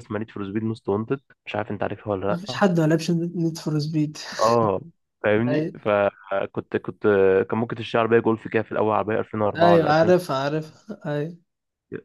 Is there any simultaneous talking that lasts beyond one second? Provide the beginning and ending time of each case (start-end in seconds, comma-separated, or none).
none